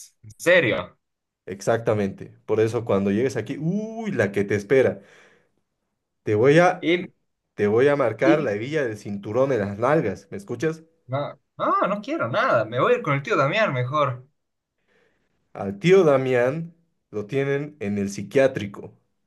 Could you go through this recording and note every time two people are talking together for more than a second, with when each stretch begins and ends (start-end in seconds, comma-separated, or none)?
none